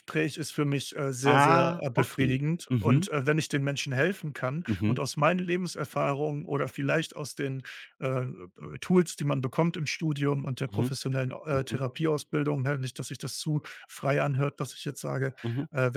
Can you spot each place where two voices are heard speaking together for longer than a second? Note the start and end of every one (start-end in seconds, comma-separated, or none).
1.2-3.1